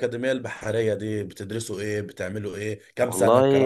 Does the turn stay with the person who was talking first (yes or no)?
no